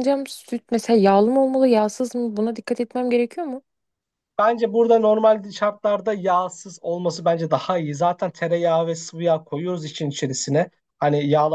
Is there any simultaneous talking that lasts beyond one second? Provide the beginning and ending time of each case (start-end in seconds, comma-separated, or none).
none